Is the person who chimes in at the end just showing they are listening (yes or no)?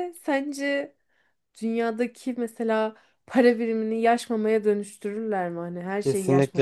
no